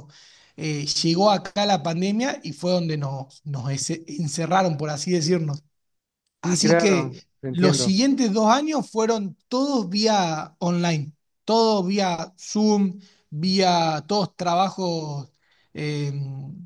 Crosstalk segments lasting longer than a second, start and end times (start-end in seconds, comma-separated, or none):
6.4-8.0